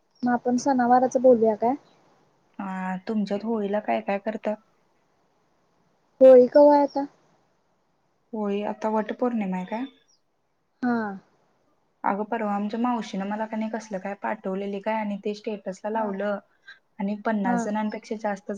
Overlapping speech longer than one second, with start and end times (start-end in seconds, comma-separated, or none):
none